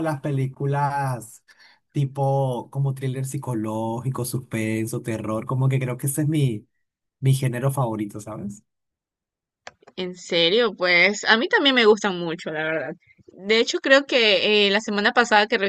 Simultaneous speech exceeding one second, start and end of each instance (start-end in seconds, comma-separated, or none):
none